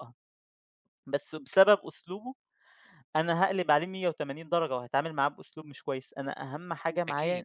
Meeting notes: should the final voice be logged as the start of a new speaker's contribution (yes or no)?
no